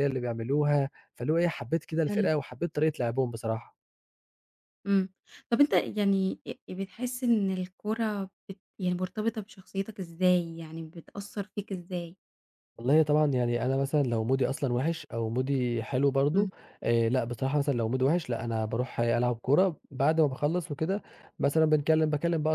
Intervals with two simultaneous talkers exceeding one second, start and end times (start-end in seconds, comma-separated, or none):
none